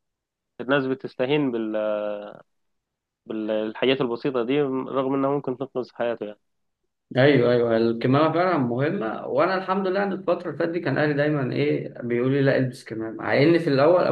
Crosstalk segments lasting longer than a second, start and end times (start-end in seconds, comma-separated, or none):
none